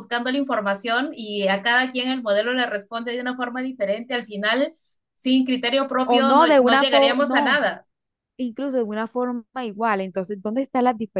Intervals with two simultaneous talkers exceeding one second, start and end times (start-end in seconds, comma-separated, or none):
6.0-7.6